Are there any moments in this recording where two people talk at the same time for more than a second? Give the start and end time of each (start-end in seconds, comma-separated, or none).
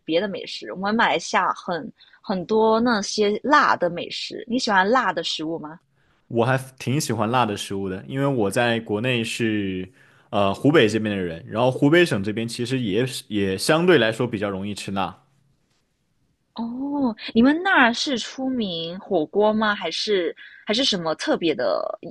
none